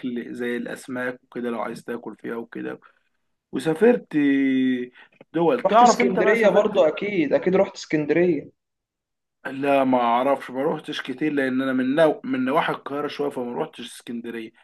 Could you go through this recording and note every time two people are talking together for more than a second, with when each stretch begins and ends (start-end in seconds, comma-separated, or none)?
5.7-6.9